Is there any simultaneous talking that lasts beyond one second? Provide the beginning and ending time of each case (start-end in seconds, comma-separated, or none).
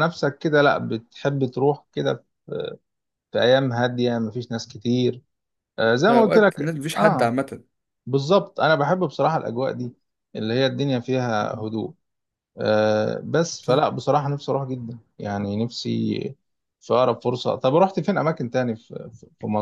6.1-7.3